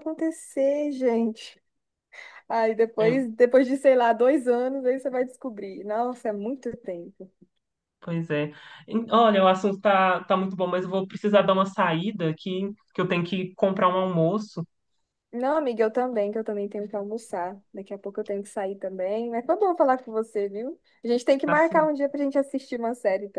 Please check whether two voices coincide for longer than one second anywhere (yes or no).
no